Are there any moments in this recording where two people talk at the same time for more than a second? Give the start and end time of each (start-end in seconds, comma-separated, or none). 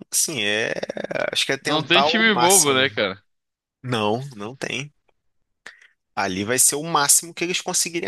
1.6-2.9